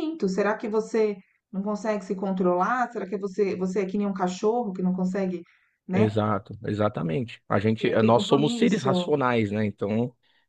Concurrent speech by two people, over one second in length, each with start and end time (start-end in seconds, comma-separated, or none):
7.8-9.1